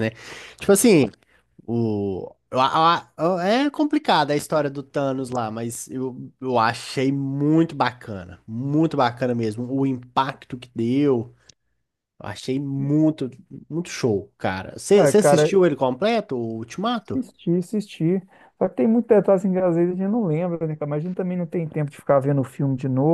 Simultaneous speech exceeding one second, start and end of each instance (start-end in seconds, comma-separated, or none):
none